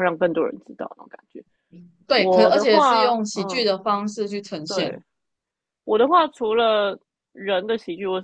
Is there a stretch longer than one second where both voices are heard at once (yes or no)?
yes